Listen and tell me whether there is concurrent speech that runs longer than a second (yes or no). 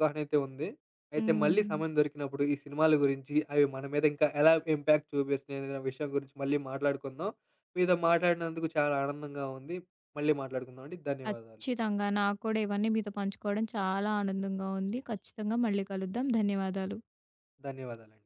no